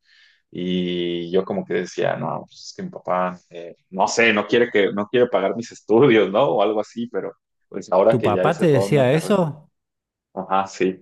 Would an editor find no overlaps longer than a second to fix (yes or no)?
no